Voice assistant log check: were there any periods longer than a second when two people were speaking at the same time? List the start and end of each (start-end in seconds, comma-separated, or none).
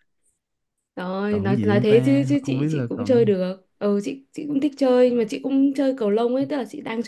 1.3-3.3